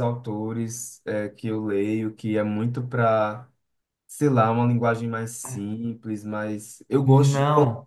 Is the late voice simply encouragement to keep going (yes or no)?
yes